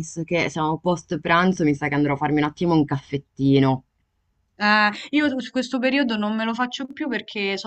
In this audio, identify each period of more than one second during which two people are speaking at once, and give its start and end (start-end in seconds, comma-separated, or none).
none